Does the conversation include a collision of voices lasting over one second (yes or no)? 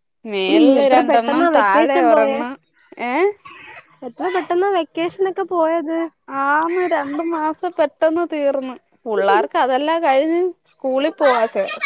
yes